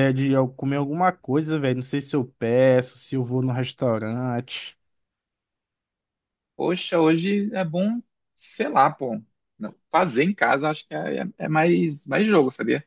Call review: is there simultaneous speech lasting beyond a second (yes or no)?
no